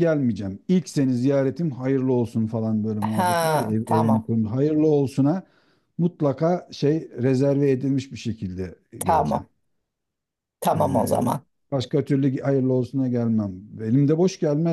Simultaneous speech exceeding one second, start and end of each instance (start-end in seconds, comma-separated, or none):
3.0-4.2